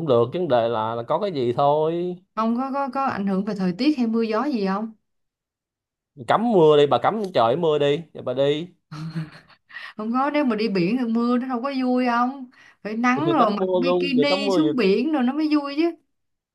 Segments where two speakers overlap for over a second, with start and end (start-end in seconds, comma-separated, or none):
13.3-14.7